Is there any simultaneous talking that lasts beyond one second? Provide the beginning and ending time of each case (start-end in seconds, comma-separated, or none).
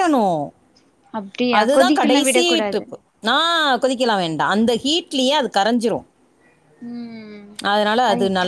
1.6-2.9